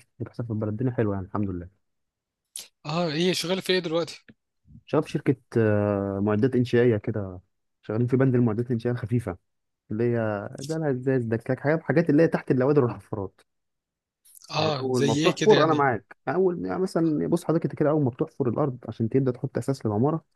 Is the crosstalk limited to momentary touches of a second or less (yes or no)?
no